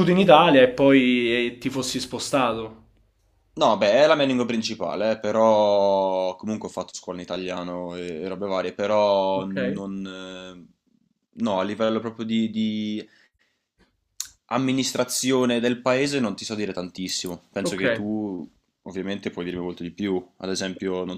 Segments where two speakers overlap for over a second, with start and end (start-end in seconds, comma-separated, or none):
none